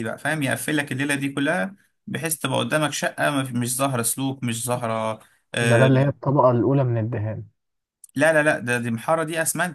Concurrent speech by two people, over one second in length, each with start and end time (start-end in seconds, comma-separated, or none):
none